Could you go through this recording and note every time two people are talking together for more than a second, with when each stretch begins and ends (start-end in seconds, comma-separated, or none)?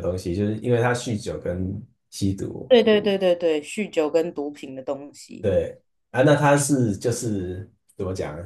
none